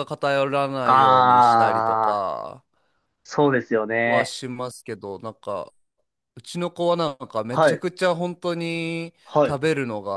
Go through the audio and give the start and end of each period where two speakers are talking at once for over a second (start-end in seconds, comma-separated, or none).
0.8-2.3